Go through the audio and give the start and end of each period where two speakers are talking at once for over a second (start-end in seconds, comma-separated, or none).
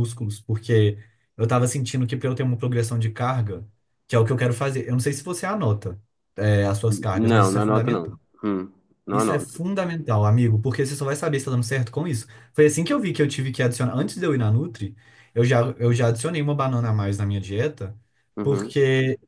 6.9-8.2